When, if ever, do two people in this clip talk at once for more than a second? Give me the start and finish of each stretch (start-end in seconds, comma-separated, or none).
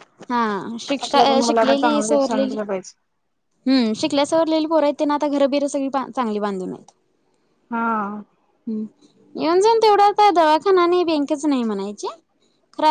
1.0-2.6